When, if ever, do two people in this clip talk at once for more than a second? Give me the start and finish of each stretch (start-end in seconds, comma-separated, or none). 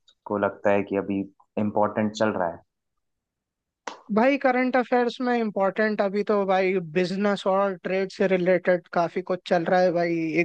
none